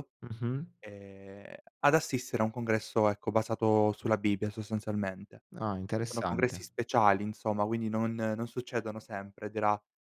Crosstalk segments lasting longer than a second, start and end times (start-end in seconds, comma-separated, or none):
none